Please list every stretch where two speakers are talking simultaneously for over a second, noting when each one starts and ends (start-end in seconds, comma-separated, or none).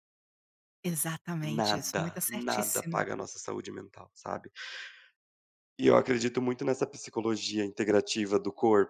1.4-3.0